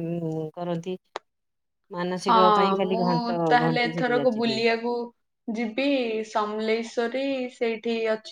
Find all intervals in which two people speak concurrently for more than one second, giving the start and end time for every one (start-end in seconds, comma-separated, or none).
2.3-4.7